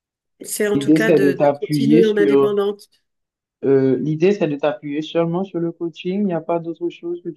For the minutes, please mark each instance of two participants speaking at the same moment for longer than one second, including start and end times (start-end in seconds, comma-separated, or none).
0.8-2.6